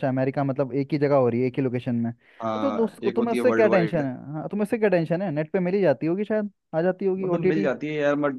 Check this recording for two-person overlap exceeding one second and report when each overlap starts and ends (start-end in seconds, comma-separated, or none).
2.6-4.0